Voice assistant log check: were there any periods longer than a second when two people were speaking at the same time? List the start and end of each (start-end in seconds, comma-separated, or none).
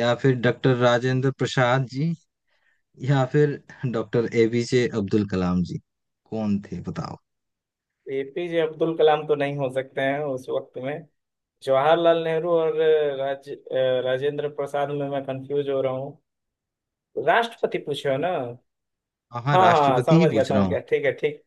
19.5-20.8